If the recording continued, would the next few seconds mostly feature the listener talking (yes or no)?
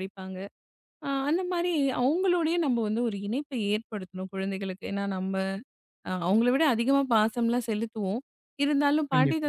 no